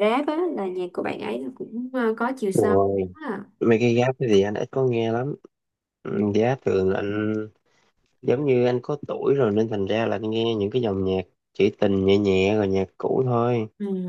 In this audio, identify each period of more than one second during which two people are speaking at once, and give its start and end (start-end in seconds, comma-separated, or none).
none